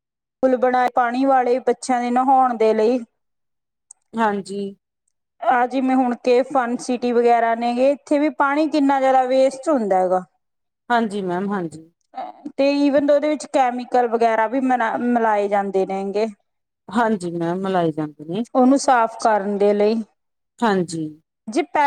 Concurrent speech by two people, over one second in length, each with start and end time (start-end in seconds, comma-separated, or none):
none